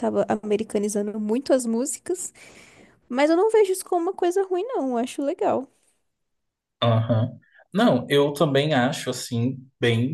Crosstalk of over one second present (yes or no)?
no